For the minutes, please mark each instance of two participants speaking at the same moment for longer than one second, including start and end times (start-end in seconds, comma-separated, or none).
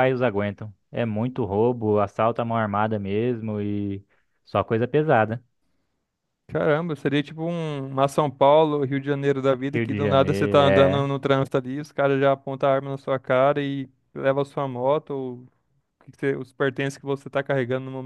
9.7-11.1